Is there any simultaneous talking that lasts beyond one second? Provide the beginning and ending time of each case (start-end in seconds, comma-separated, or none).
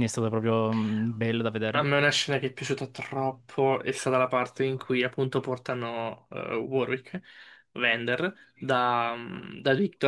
none